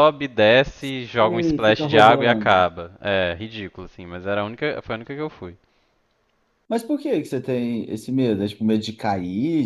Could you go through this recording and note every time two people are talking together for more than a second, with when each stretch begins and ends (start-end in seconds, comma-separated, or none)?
1.3-2.7